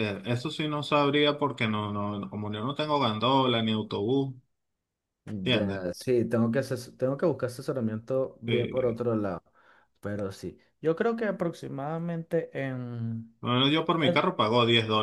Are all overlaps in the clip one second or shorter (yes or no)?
yes